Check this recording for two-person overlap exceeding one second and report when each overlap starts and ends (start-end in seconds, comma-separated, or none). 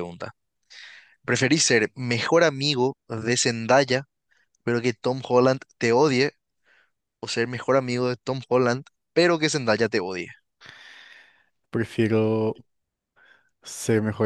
none